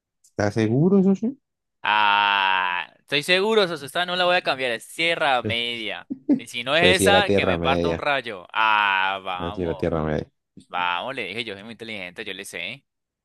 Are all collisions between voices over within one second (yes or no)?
no